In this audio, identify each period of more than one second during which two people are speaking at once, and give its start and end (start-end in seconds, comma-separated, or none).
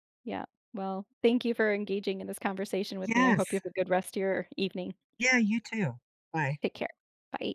none